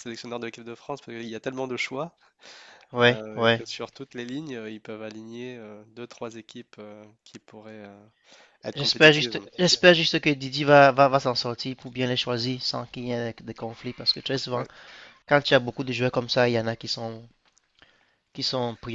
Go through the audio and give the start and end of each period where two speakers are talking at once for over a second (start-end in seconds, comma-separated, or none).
none